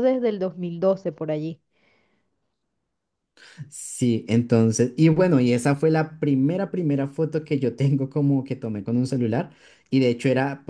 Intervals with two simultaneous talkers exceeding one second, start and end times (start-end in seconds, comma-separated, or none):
none